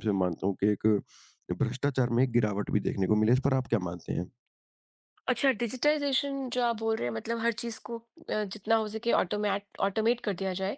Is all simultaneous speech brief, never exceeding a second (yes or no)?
yes